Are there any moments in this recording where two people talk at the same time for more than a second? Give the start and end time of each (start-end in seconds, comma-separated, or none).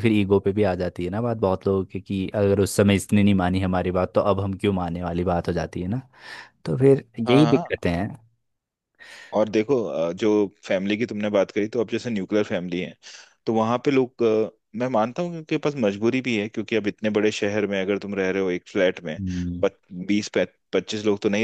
none